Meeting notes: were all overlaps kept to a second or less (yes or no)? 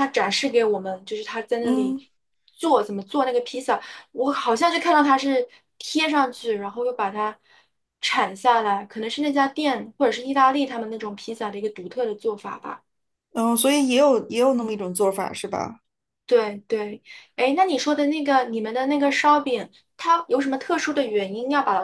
yes